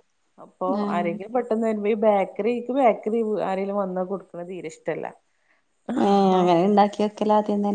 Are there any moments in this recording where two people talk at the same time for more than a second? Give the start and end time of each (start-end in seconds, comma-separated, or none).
none